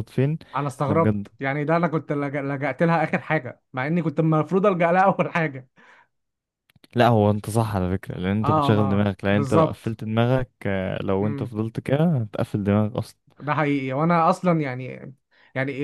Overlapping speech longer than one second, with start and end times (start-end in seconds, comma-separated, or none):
8.4-10.0